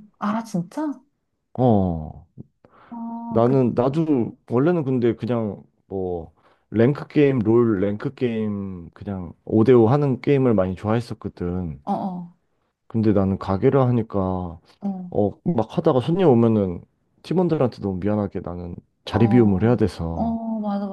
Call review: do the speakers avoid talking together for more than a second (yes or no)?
no